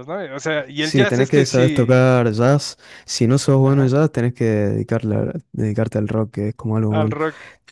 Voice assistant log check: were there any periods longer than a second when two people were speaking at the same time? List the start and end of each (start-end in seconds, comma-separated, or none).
0.8-2.0